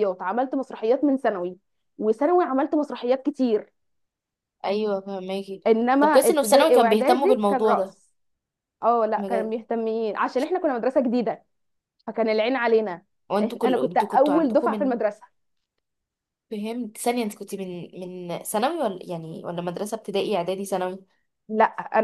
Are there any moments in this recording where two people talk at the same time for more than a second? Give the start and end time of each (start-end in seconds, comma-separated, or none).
5.7-8.0, 13.4-15.0